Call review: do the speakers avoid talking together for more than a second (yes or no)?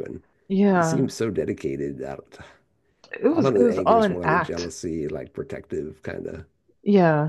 no